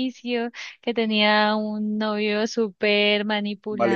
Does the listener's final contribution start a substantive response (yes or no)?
no